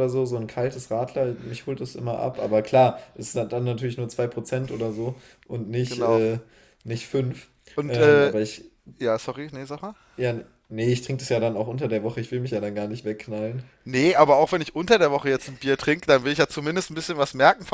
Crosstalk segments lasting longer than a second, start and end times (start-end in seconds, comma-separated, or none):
none